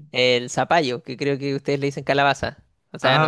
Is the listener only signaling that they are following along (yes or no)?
yes